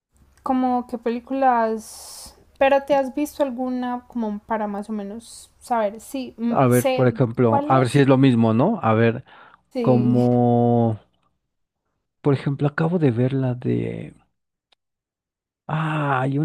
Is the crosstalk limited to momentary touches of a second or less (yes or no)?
no